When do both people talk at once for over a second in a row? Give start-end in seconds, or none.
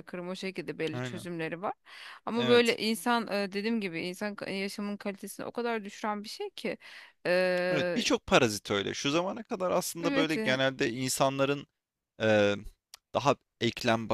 none